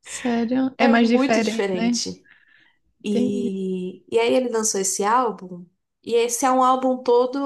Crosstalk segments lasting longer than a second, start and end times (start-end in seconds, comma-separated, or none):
0.8-2.0